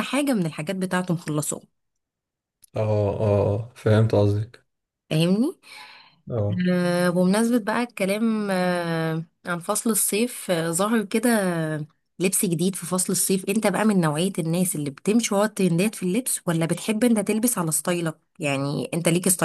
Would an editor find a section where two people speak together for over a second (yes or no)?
no